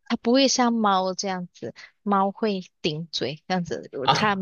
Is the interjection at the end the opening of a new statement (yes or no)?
no